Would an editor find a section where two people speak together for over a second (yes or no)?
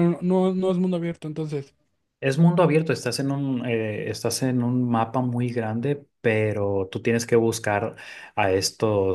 no